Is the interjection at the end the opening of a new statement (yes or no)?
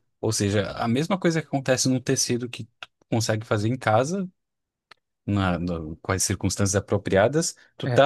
no